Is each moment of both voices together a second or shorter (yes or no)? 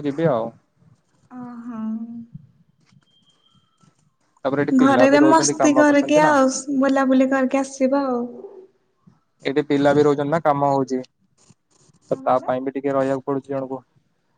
no